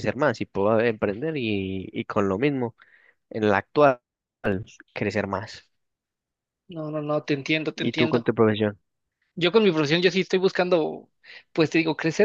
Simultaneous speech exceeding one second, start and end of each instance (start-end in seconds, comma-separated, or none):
none